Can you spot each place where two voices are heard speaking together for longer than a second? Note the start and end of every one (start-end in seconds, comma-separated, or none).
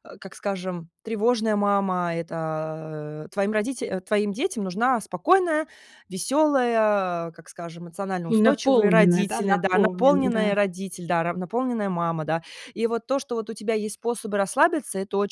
8.2-10.6